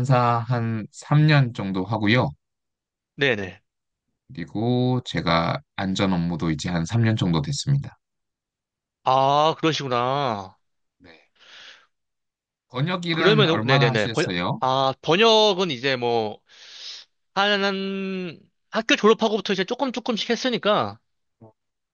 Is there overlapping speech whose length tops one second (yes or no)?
yes